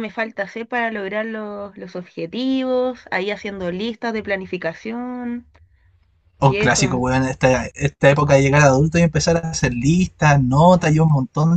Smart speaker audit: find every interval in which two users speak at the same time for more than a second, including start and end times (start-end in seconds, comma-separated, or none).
none